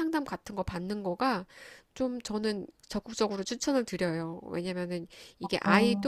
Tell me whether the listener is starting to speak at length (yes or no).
no